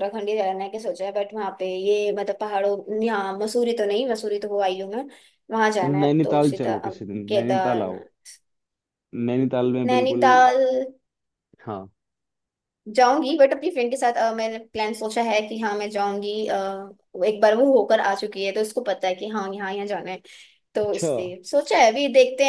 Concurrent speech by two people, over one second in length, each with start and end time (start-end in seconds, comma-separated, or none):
6.0-8.0